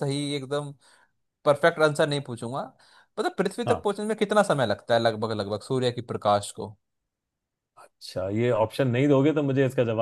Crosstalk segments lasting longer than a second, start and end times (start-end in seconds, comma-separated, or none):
none